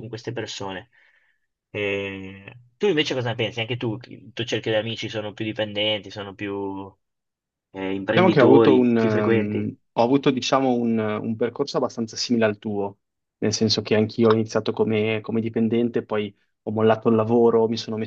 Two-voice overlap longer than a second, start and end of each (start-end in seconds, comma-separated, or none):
8.1-9.7